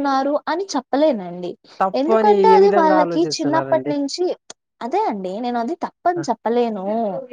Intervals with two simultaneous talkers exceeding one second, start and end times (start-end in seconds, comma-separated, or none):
2.0-3.9